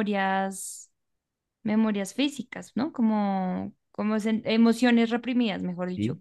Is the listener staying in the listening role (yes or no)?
no